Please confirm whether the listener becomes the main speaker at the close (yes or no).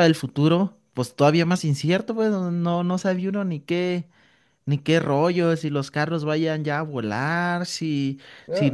yes